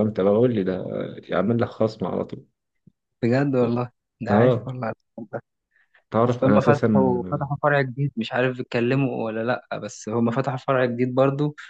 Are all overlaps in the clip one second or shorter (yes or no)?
no